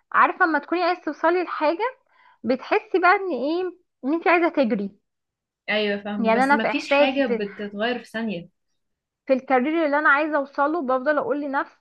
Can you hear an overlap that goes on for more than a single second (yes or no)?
yes